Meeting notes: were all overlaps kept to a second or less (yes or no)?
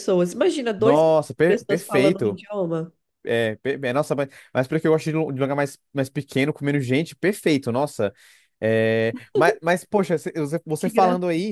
no